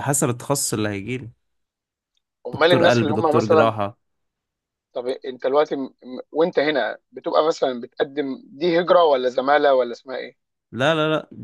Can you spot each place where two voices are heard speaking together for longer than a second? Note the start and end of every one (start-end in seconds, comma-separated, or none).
2.5-3.7